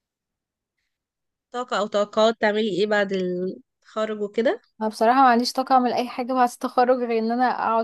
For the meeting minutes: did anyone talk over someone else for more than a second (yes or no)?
no